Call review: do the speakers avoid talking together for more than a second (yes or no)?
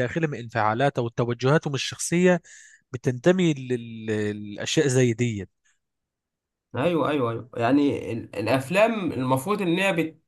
yes